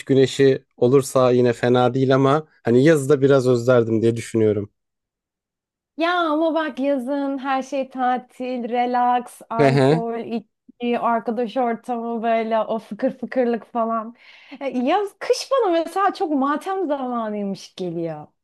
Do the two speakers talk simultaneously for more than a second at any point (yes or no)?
no